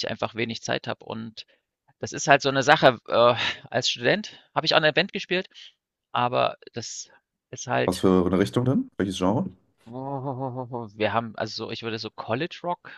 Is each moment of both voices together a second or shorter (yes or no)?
yes